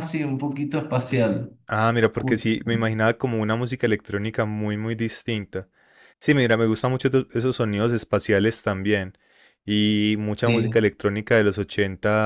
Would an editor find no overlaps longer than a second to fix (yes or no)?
yes